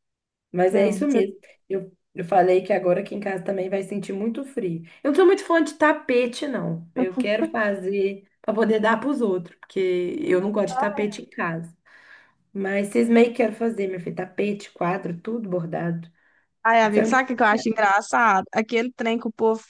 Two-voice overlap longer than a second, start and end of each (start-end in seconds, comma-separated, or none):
none